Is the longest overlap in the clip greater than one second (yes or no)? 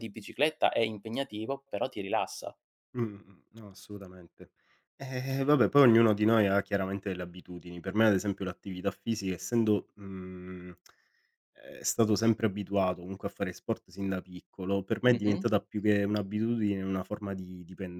no